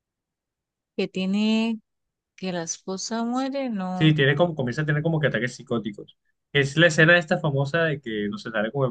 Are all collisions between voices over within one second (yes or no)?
yes